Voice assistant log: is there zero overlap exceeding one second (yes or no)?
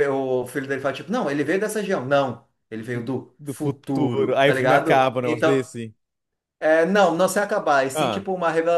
no